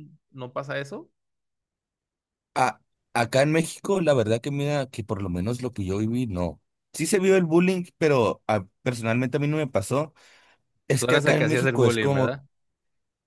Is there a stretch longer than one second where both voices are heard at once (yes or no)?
yes